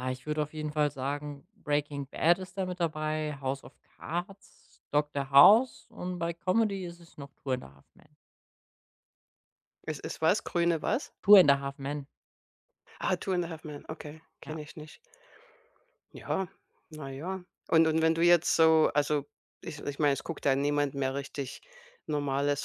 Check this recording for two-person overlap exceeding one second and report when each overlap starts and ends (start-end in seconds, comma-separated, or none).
none